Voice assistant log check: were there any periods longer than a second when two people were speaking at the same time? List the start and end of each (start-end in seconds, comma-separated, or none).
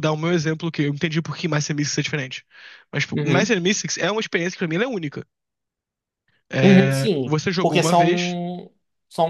6.6-8.4